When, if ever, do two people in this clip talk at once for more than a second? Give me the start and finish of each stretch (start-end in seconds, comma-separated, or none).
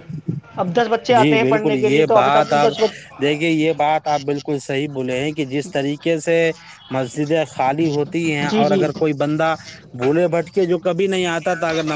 1.2-2.7